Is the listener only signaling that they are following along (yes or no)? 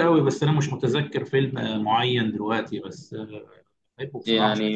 no